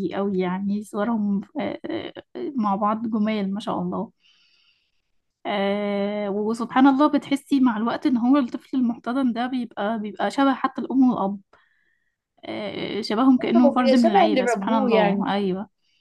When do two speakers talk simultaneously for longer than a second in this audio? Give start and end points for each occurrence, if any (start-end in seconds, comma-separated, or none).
13.7-15.3